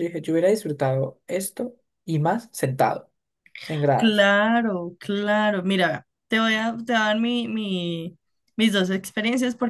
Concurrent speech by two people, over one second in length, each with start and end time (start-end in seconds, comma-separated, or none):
none